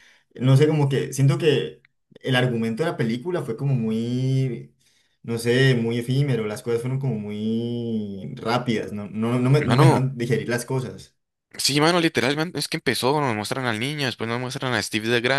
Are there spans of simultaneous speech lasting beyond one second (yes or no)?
no